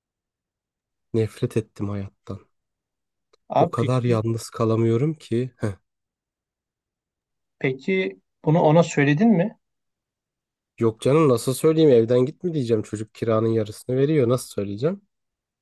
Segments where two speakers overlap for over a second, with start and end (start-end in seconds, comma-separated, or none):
none